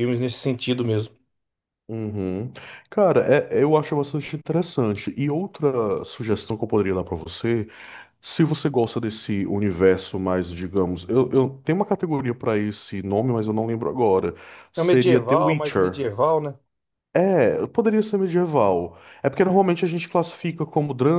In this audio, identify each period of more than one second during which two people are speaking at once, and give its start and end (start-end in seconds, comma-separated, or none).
14.8-16.1